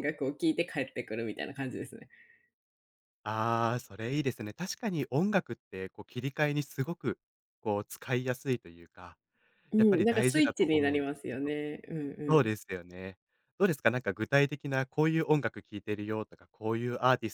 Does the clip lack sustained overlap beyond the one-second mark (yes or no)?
no